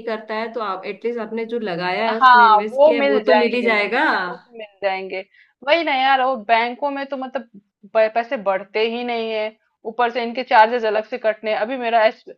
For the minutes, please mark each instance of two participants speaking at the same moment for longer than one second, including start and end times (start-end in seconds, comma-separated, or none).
2.1-4.0